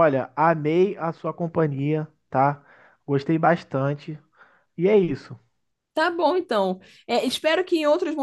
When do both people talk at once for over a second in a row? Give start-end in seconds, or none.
none